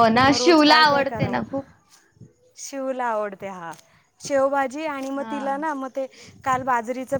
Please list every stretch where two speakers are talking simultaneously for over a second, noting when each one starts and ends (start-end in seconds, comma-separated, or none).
none